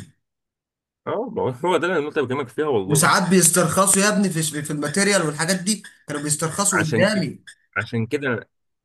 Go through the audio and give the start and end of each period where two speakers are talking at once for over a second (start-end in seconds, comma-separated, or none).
none